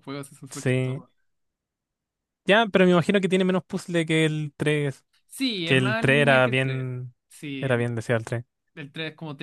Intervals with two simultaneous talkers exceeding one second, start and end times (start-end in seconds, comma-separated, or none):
5.6-6.9